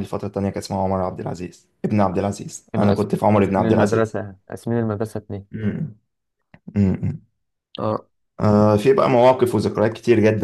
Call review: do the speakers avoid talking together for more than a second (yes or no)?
no